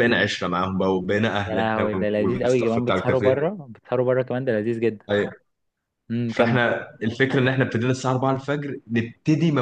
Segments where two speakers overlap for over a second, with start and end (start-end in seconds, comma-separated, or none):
1.4-3.4